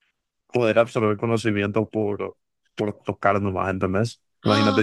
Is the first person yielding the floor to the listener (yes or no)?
no